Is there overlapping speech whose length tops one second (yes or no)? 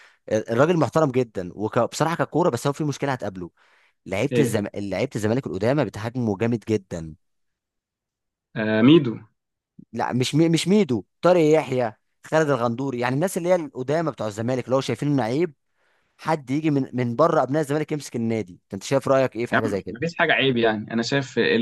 no